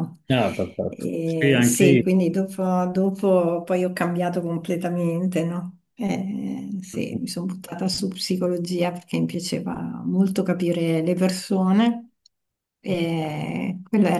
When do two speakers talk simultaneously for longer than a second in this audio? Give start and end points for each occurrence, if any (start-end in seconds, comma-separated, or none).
0.9-2.3